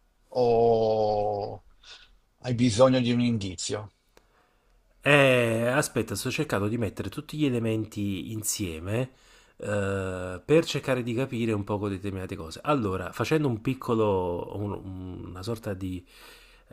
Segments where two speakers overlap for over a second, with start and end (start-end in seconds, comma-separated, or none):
none